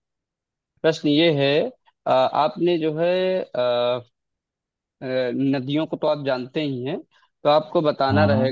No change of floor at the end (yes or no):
yes